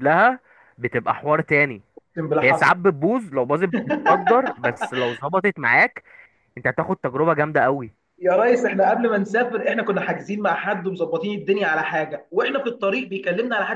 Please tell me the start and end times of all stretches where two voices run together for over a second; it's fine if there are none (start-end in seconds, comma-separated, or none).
none